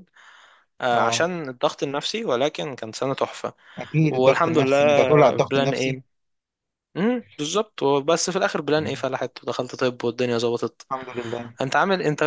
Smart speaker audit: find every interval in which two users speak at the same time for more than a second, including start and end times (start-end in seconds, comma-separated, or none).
4.1-6.0